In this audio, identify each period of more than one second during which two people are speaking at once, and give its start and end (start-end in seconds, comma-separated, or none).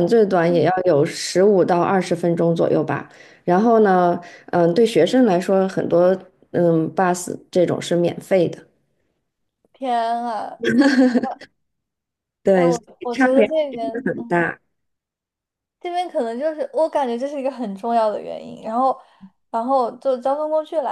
12.5-14.4